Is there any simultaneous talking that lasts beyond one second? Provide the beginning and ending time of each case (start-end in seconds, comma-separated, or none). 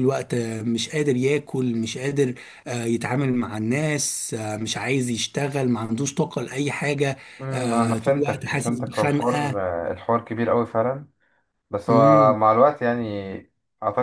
7.4-9.6